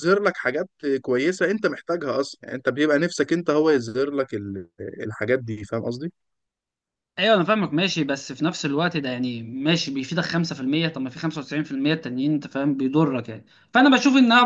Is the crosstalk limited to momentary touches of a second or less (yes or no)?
yes